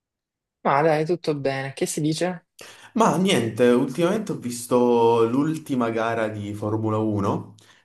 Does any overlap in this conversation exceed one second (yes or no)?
no